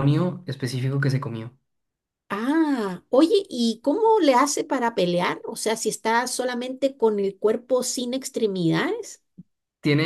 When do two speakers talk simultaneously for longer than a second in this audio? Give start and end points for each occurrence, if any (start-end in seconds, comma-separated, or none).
none